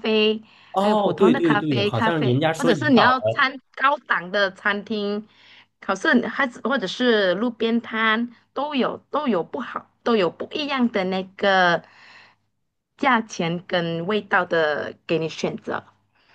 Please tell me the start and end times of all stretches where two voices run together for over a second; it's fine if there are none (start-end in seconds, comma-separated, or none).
0.7-3.5